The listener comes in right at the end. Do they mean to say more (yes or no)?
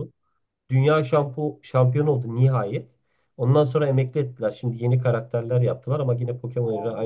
no